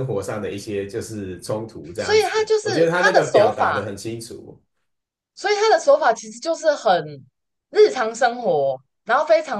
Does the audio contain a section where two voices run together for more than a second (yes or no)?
yes